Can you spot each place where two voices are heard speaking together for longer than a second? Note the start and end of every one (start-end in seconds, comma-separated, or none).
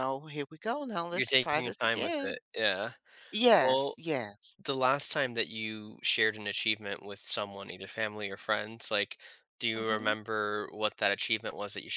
1.1-2.4